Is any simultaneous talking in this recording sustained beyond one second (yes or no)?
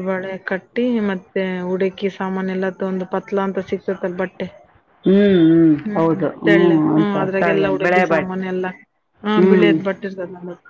yes